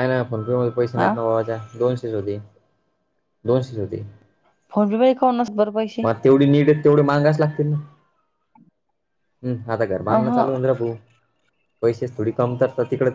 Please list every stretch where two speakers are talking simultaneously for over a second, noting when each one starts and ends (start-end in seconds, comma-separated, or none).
none